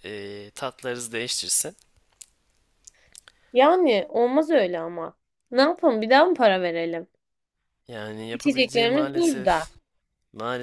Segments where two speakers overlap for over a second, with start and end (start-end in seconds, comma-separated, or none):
8.3-9.7